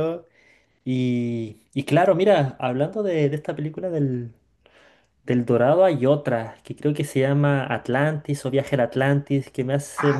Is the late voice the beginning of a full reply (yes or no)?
yes